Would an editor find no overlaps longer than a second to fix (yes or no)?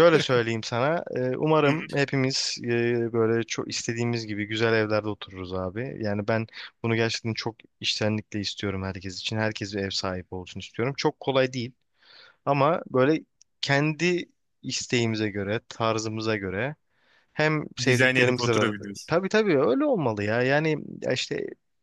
no